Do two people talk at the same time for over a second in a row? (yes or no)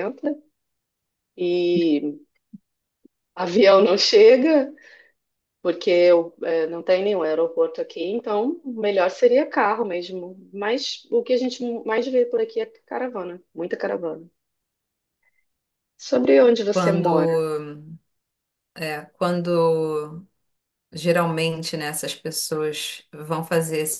no